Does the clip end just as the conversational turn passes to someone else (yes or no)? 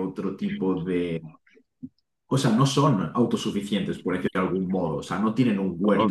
no